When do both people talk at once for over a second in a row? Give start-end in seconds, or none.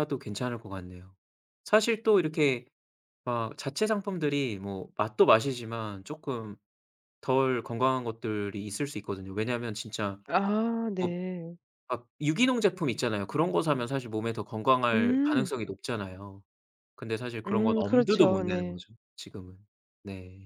17.5-18.8